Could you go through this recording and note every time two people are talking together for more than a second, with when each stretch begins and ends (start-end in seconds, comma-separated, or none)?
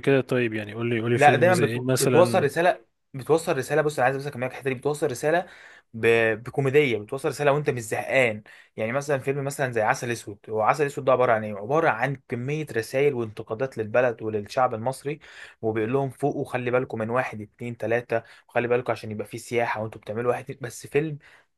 1.1-2.5